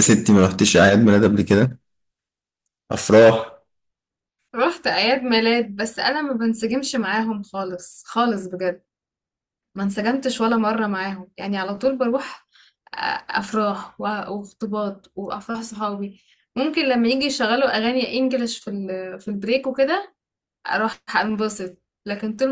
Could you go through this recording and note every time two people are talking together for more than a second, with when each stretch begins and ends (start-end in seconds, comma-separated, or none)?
none